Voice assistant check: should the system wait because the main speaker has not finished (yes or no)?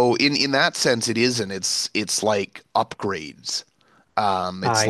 yes